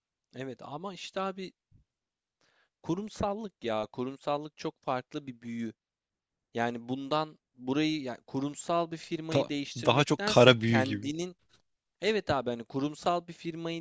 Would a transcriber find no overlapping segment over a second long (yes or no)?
no